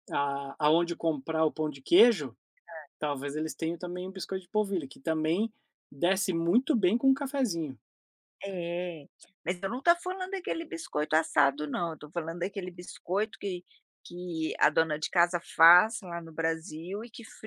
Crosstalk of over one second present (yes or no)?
no